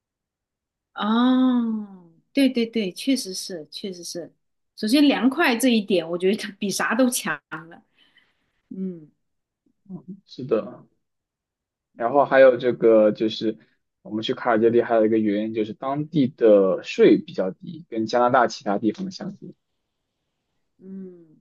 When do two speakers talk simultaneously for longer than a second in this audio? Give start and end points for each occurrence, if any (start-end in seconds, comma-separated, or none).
none